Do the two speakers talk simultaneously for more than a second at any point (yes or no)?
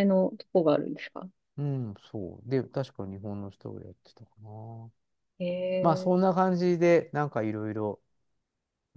no